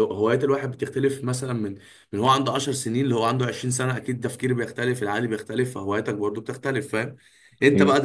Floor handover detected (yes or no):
no